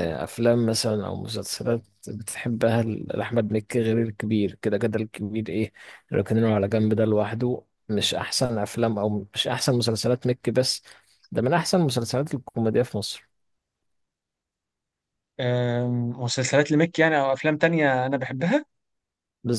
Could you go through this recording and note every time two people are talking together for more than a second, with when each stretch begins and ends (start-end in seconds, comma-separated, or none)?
none